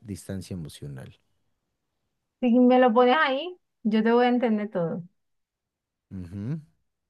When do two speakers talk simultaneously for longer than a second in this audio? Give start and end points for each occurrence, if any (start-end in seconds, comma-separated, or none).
none